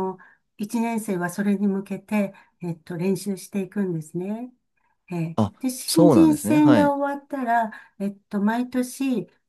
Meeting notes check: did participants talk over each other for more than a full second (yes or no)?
yes